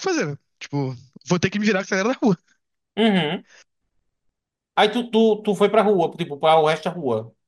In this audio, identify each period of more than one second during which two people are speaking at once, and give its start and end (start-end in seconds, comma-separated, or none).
none